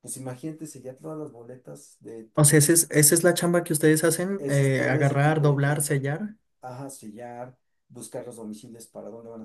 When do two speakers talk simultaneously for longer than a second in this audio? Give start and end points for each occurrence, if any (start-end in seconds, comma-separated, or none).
4.4-6.0